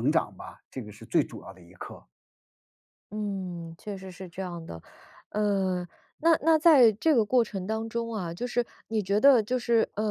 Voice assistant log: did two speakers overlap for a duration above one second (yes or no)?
no